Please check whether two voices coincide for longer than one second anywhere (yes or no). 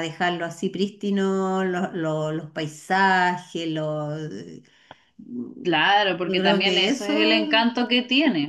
yes